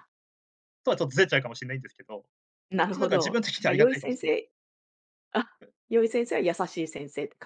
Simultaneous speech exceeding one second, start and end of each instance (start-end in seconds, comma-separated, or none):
2.8-4.3